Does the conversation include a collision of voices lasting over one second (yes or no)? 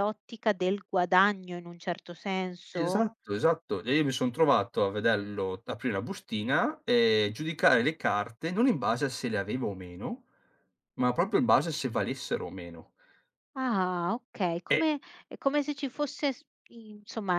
no